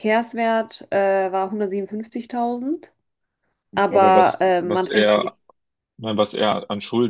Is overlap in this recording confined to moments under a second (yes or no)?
no